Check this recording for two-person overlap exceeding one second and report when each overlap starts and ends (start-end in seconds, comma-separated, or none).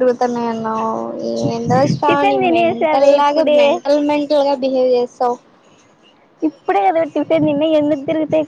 2.1-3.6